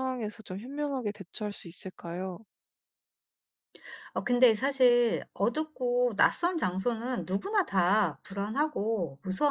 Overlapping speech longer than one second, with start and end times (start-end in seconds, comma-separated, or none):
none